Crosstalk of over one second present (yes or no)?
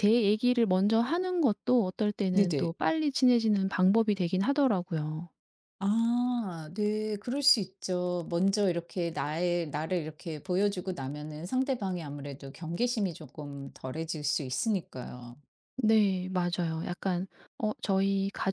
no